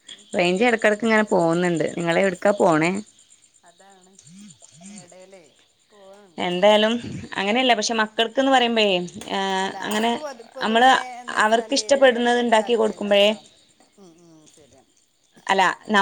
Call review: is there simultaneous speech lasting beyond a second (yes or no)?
yes